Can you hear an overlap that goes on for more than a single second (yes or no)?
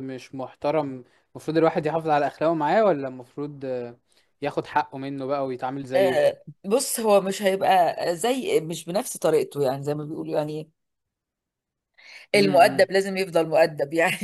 no